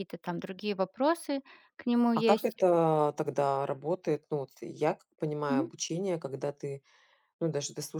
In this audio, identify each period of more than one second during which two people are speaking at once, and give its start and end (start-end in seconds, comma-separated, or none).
none